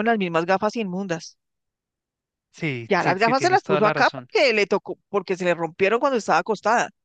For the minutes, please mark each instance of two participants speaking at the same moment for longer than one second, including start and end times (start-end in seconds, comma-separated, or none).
2.9-4.3